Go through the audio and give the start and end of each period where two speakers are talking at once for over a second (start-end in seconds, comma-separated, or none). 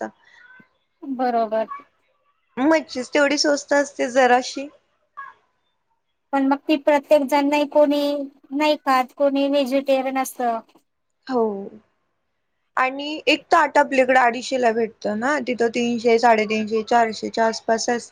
none